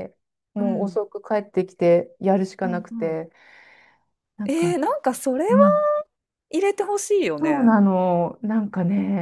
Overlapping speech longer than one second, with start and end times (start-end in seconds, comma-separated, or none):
none